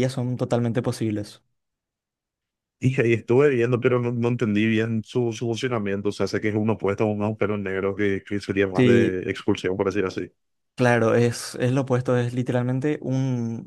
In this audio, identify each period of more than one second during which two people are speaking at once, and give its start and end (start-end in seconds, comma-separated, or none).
none